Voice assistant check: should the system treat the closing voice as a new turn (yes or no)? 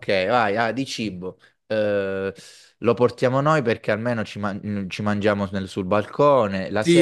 yes